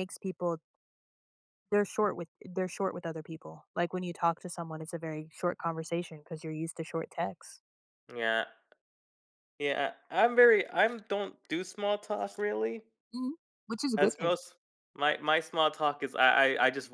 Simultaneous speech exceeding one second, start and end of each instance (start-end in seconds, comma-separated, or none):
none